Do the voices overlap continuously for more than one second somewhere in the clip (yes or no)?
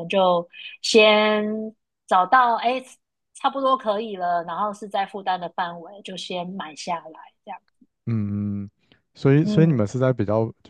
no